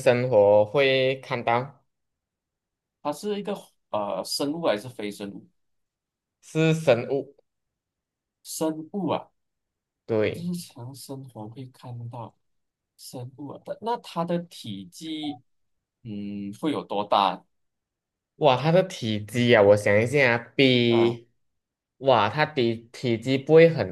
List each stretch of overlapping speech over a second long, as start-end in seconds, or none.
none